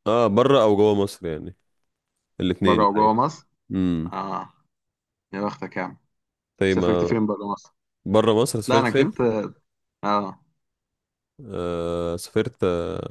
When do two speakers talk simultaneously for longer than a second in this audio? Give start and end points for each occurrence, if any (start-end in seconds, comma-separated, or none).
none